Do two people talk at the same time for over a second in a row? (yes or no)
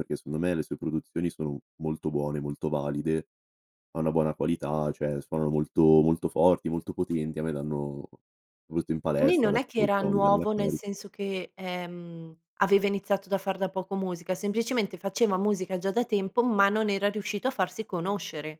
yes